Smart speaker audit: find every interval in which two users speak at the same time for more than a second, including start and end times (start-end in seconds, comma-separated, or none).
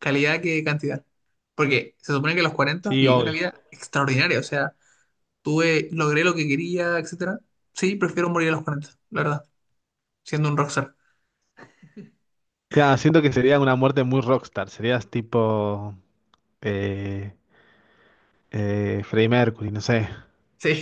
none